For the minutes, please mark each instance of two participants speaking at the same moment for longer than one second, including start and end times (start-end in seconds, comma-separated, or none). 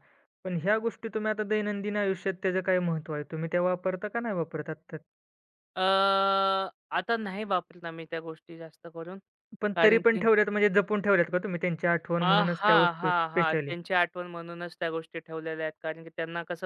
12.2-13.7